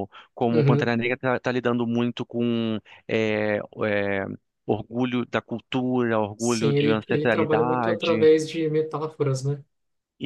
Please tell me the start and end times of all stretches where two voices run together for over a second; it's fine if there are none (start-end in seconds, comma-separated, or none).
6.4-8.3